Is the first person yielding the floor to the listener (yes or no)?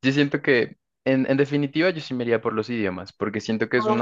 no